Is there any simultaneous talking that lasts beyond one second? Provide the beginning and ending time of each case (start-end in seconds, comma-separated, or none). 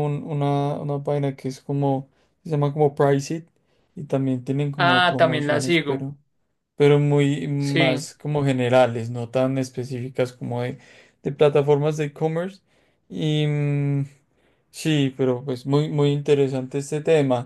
4.8-6.1